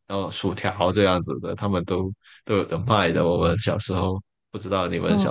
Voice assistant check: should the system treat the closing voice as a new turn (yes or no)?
yes